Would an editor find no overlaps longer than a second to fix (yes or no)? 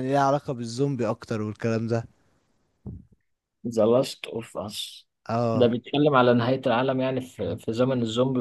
yes